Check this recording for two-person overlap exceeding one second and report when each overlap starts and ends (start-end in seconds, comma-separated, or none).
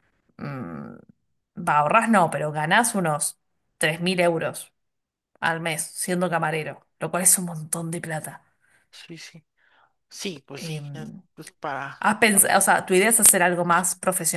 none